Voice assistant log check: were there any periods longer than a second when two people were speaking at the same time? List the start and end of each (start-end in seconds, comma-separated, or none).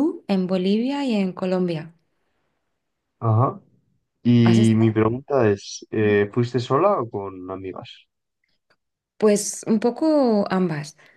none